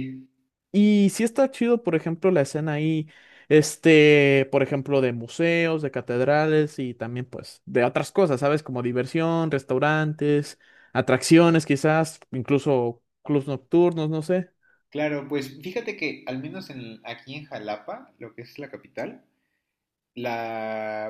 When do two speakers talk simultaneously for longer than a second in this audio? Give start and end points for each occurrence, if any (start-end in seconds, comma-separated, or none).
none